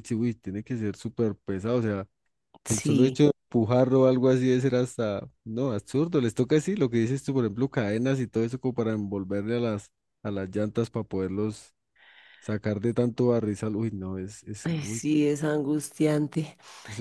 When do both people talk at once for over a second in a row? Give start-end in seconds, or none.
none